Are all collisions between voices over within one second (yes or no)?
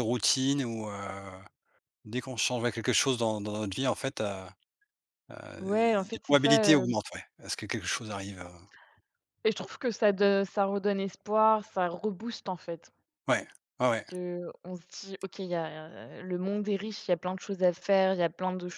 no